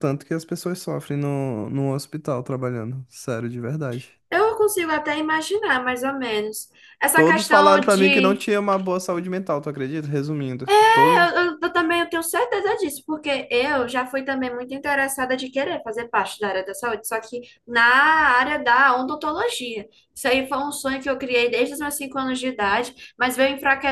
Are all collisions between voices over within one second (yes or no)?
no